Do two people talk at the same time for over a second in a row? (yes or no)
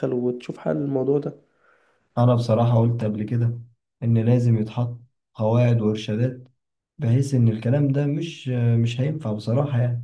no